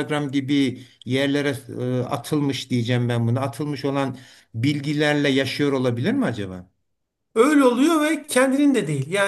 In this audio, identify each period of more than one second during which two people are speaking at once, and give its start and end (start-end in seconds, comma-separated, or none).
none